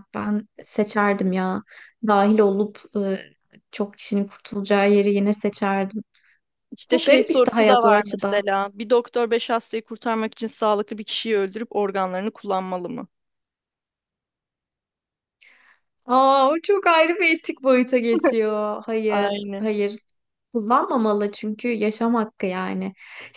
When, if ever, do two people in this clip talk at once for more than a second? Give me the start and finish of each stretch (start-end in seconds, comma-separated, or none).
6.9-8.4